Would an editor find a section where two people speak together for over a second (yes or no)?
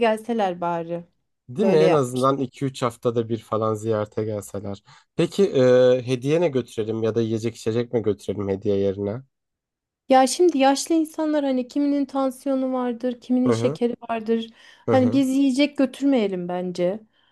no